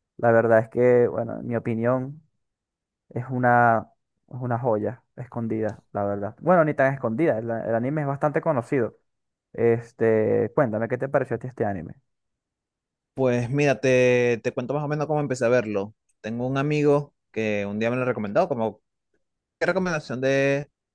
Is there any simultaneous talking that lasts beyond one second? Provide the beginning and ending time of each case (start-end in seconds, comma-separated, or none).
none